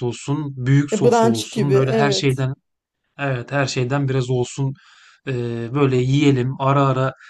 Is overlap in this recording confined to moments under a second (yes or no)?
no